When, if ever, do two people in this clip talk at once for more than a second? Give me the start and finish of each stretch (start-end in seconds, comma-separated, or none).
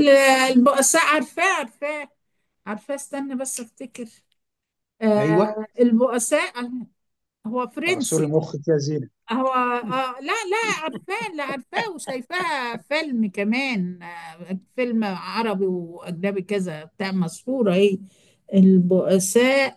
none